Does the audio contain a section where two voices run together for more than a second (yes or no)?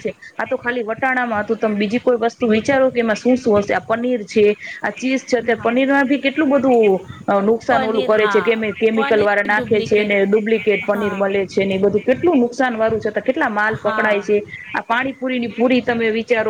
yes